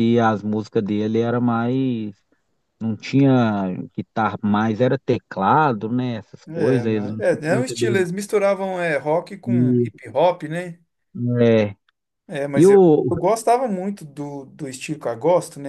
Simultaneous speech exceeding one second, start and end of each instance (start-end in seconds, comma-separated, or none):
6.5-8.1